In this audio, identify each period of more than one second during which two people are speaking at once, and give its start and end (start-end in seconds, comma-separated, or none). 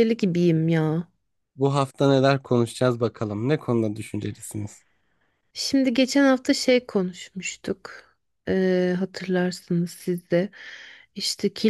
none